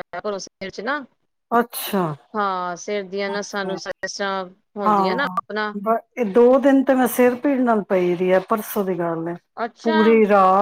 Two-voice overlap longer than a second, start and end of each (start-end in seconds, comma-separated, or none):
none